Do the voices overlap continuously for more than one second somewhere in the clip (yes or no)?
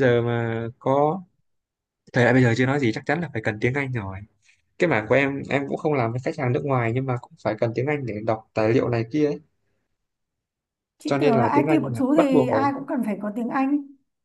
yes